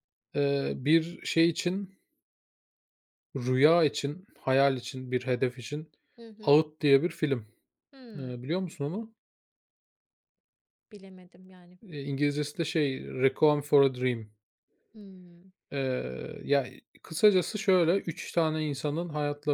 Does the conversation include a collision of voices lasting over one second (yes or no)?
no